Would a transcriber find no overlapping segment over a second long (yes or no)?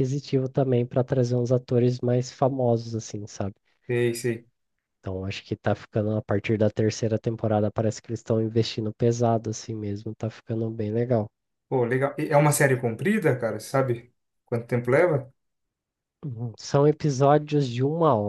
yes